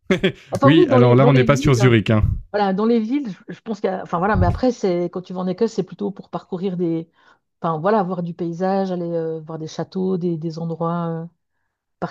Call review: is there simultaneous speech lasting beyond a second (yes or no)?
yes